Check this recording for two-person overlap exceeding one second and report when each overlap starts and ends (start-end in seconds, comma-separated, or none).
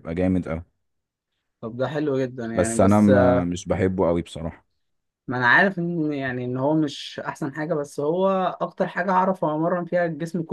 none